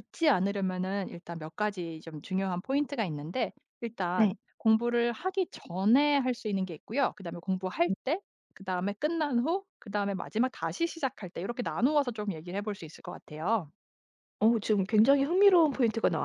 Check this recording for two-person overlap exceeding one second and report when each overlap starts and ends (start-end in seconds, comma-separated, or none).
none